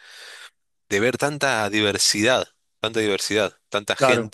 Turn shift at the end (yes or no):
yes